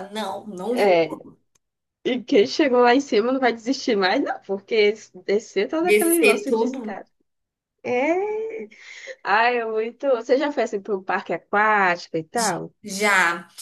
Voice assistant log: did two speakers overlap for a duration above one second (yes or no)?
yes